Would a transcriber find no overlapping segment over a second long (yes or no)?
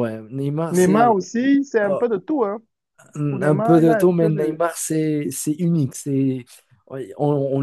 no